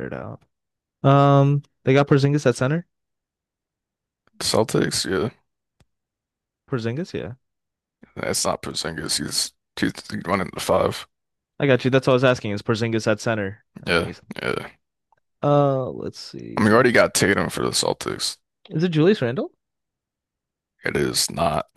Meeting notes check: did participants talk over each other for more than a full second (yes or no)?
no